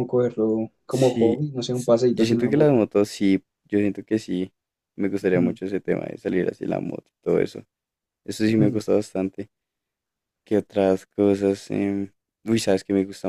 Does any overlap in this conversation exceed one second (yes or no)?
yes